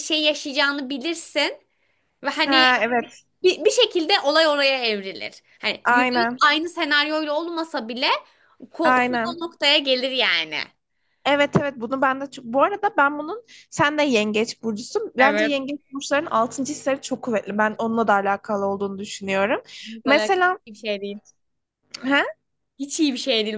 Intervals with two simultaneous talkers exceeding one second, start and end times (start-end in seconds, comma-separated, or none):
none